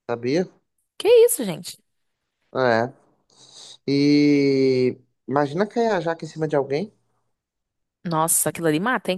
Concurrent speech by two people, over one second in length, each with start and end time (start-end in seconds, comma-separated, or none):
none